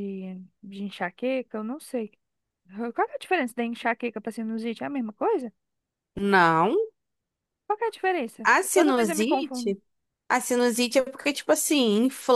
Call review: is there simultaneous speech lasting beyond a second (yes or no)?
yes